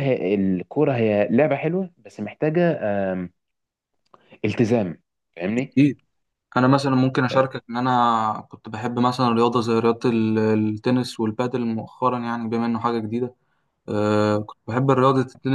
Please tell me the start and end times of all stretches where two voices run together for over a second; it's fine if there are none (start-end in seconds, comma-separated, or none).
none